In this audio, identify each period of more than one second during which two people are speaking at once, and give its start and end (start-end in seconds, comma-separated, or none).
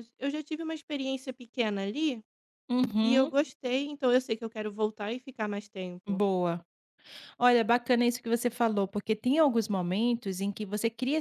none